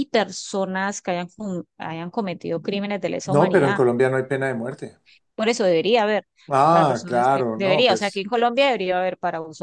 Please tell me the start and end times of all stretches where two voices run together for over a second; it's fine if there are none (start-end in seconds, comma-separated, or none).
6.7-8.2